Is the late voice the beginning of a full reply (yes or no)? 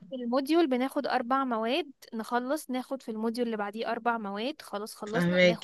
no